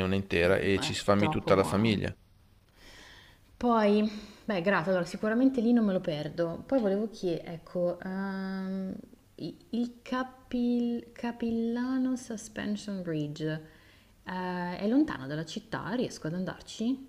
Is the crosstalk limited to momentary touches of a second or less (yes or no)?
no